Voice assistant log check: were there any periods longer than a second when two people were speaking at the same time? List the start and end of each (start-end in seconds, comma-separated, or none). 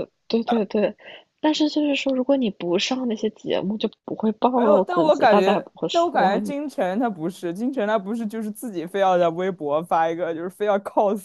4.5-6.6